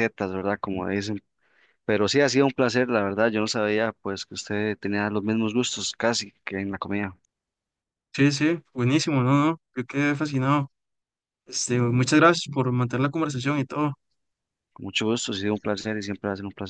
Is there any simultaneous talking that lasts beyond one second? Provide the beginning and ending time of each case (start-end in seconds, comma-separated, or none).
none